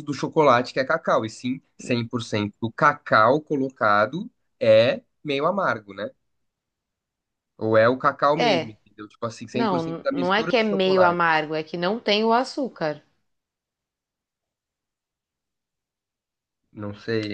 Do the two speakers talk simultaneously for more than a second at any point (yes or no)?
yes